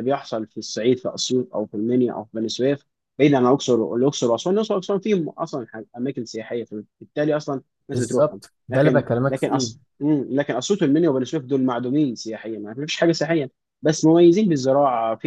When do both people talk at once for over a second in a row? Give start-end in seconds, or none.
7.9-9.7